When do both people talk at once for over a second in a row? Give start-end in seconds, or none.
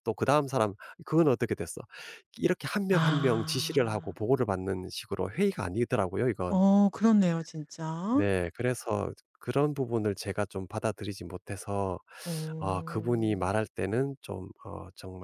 2.9-4.2